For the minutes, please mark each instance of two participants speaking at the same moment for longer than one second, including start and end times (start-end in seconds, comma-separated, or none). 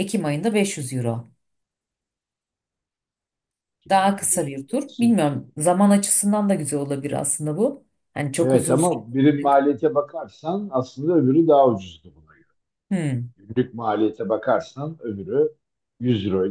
3.9-5.2